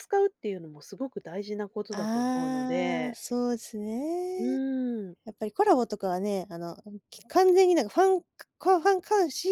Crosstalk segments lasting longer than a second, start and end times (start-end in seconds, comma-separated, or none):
1.9-3.2